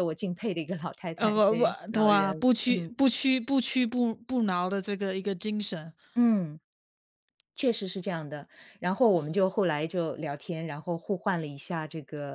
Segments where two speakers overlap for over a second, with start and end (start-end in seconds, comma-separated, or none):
1.2-2.9